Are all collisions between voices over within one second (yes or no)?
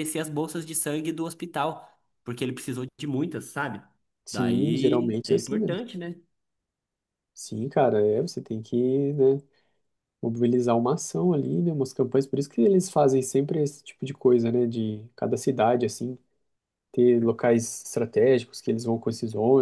no